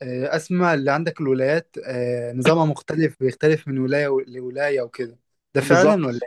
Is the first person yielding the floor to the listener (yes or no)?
yes